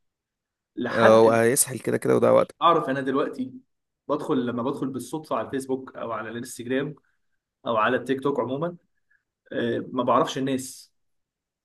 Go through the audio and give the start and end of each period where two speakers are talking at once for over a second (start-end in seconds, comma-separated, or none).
none